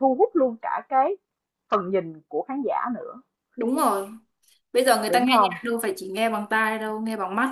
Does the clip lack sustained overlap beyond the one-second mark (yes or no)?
yes